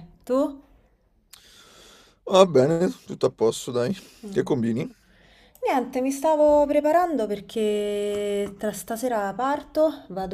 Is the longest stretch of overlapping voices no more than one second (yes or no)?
yes